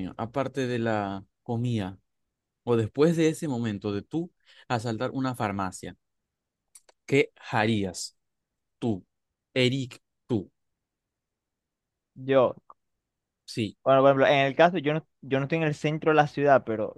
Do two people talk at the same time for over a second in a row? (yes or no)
no